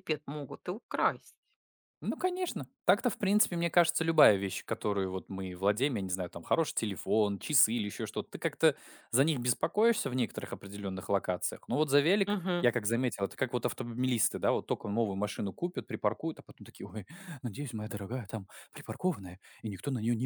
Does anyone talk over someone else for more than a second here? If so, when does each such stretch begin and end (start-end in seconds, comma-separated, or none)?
none